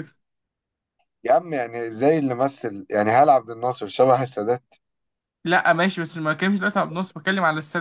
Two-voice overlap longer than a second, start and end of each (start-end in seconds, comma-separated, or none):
none